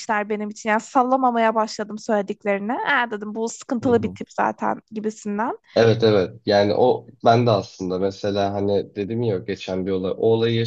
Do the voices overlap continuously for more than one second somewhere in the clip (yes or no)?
no